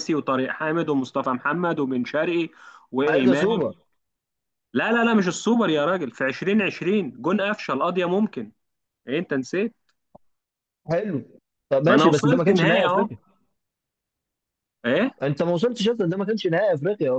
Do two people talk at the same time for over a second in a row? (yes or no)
yes